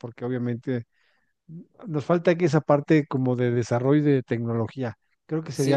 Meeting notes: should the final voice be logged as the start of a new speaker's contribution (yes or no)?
yes